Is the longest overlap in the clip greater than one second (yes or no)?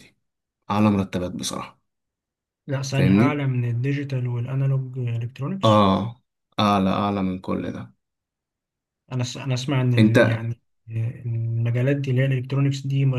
no